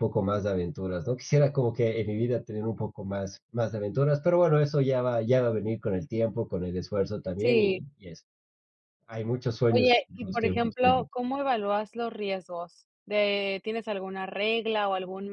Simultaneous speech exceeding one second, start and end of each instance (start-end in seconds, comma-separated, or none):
9.7-11.0